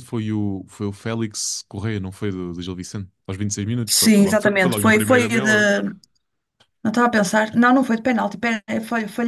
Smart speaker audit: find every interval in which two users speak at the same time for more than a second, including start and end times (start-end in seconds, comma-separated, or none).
3.9-5.7